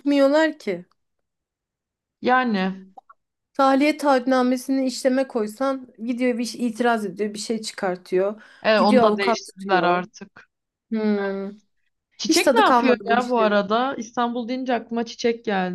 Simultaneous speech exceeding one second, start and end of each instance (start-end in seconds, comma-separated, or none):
8.6-10.0, 12.2-13.6